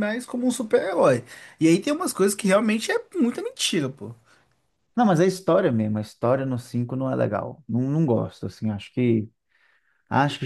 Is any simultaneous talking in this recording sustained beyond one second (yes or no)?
no